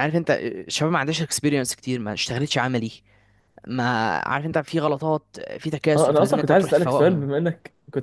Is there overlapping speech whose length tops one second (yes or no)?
yes